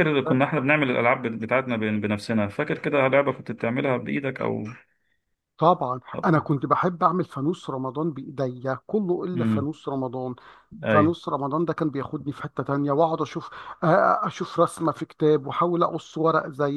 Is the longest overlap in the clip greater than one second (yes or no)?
no